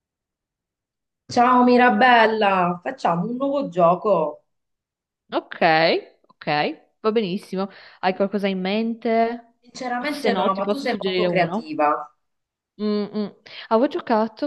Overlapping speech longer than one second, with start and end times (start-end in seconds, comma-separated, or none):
10.0-11.8